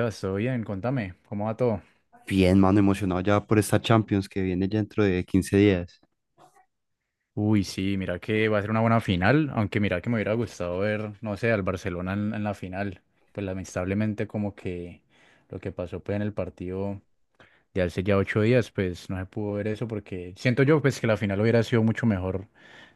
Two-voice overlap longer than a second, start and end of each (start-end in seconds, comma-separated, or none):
none